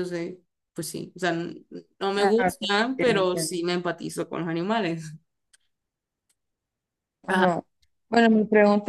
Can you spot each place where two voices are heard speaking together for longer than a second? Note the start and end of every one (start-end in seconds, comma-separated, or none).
2.2-3.5